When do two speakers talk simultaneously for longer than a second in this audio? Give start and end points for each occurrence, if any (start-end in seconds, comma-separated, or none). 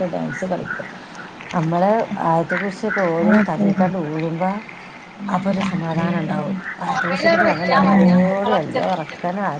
7.0-8.8